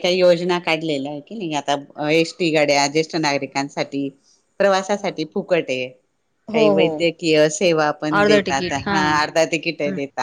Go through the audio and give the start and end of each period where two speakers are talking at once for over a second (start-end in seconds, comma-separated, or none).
8.2-9.4